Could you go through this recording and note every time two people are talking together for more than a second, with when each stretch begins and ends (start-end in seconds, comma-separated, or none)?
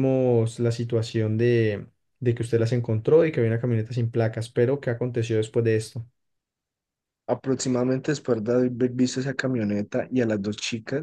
none